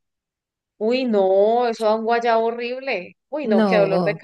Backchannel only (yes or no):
yes